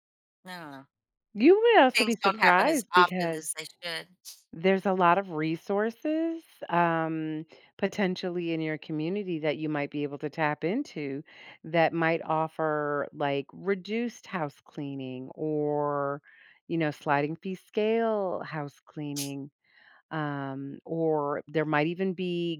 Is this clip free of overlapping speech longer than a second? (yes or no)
no